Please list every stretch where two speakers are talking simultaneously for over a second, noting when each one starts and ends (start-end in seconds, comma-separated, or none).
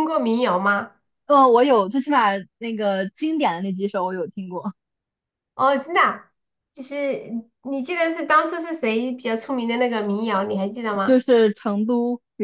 none